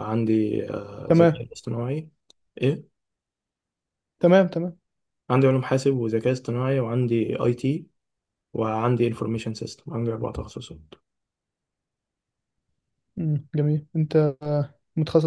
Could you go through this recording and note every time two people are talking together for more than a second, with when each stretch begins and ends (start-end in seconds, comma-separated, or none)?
none